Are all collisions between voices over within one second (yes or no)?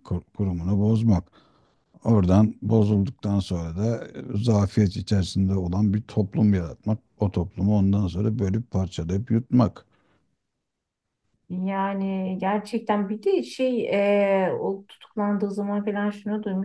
yes